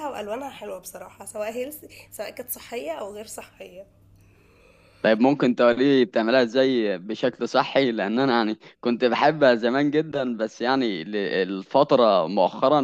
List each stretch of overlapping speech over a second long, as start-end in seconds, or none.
none